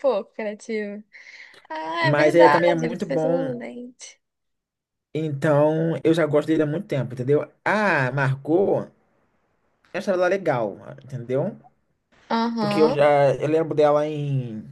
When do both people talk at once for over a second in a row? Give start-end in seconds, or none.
2.0-3.6